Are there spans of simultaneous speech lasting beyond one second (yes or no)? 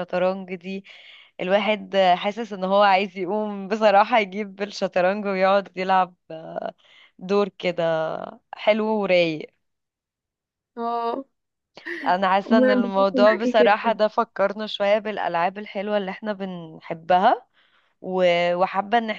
yes